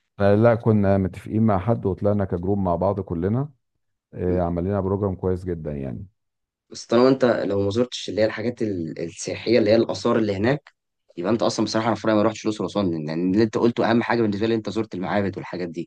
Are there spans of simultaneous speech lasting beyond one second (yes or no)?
no